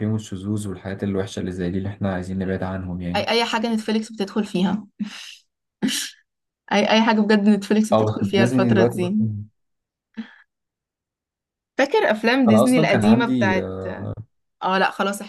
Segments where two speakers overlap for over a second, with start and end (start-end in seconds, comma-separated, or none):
7.9-9.1, 12.5-13.7